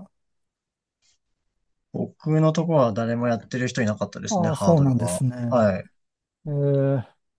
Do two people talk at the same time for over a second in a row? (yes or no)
yes